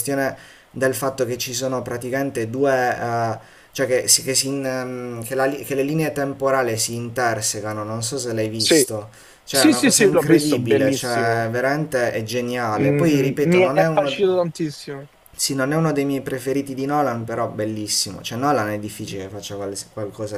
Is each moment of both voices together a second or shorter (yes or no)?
no